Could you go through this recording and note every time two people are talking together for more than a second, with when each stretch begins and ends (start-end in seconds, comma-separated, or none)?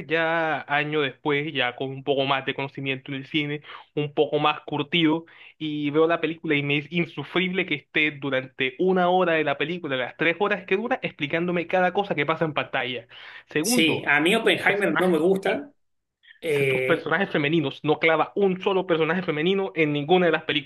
13.6-15.2